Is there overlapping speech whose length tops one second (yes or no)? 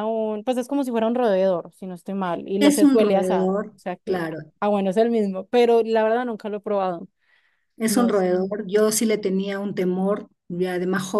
yes